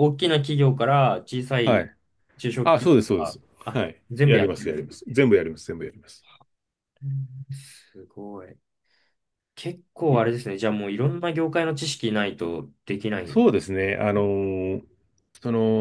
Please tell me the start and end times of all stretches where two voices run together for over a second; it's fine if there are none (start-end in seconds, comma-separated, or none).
2.6-4.9